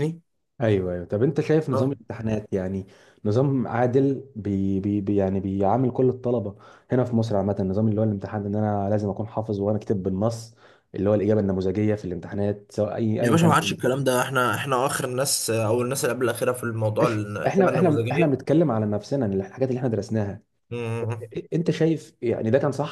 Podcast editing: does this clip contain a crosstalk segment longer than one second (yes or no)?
yes